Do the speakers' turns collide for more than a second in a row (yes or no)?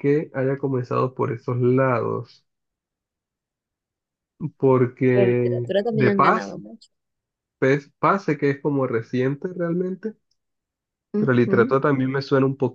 yes